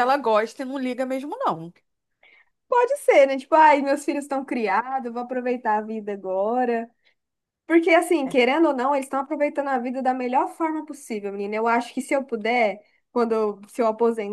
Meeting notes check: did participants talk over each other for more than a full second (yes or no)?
no